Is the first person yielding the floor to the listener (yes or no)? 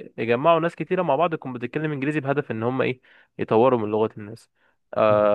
yes